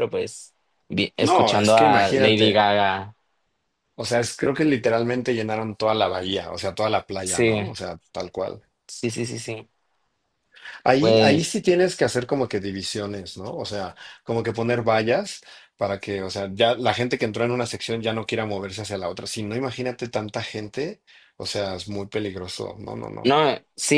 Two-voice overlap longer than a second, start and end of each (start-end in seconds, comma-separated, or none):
1.2-2.6